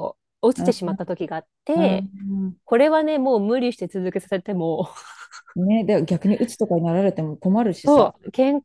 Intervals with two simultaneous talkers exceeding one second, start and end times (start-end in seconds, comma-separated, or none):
none